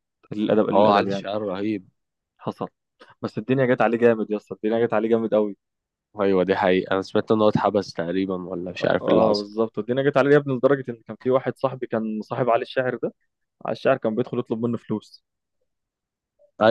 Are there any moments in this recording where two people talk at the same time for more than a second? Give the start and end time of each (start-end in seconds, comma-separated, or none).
none